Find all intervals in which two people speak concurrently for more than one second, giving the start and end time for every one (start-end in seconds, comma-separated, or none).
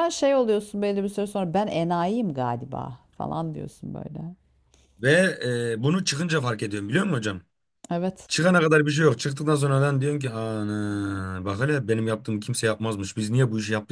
none